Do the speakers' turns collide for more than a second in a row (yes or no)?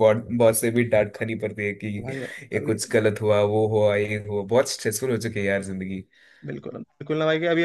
no